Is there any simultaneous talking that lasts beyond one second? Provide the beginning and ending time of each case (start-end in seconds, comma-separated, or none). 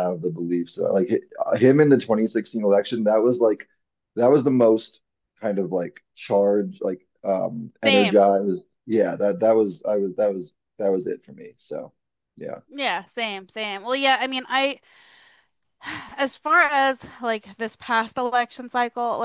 none